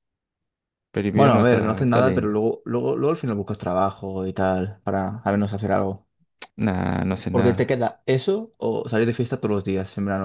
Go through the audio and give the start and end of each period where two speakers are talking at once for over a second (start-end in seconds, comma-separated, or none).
1.1-2.4